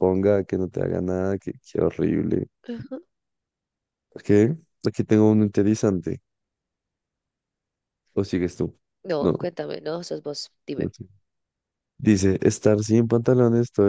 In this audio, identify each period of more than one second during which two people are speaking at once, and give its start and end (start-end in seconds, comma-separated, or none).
none